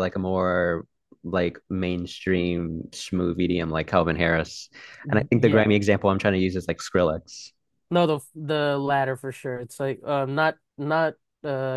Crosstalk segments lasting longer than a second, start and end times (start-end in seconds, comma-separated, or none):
none